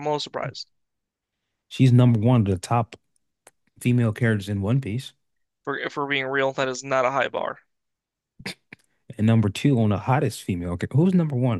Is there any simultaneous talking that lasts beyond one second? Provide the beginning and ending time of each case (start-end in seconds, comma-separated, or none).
none